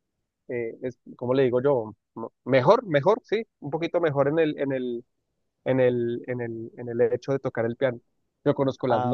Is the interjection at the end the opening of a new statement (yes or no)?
no